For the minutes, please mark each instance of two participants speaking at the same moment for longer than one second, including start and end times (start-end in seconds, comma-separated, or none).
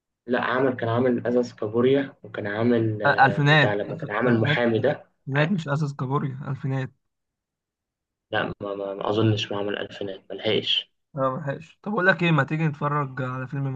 3.1-4.6